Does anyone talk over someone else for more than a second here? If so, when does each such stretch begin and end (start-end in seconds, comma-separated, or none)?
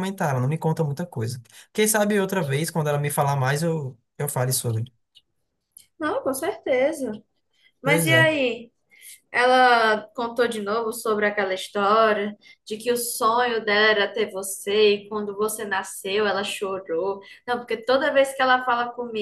none